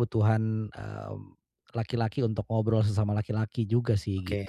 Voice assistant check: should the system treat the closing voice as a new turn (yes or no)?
yes